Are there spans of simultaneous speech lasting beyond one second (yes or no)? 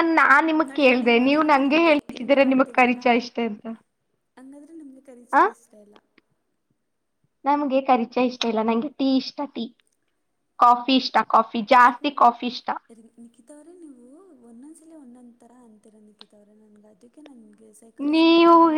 yes